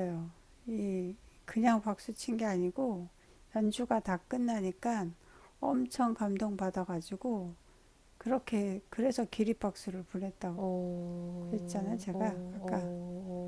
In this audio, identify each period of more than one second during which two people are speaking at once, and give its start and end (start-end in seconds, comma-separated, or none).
11.5-12.9